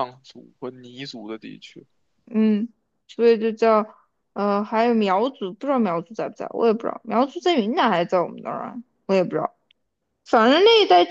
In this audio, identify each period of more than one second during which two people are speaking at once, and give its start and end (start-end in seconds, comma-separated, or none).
none